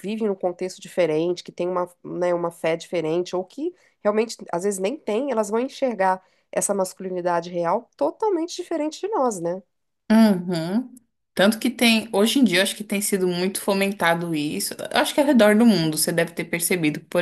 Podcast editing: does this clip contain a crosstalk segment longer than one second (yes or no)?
no